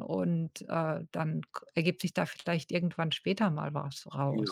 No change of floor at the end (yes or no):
no